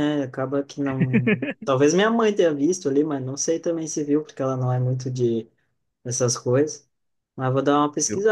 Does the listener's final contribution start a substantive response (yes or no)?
no